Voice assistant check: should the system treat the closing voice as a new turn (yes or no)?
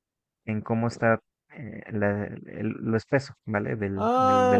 yes